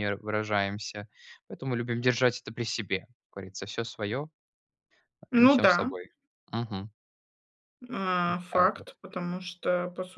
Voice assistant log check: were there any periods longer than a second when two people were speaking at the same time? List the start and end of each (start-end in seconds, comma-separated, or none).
none